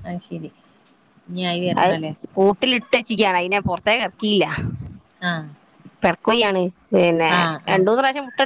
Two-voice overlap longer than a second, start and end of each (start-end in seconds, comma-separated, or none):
none